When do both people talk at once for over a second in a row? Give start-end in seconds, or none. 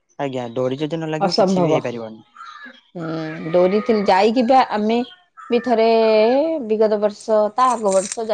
none